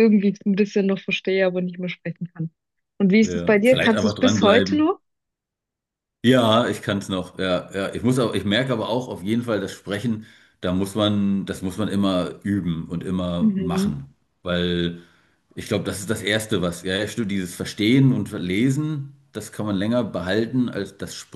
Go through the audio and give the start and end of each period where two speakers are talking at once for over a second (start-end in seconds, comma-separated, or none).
3.2-4.9